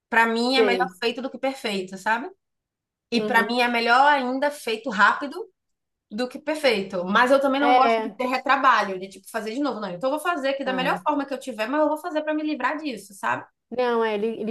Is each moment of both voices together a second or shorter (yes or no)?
yes